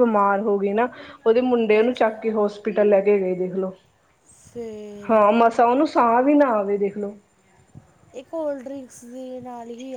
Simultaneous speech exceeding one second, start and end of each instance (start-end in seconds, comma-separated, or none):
none